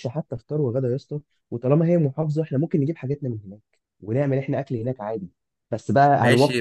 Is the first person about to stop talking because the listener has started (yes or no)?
yes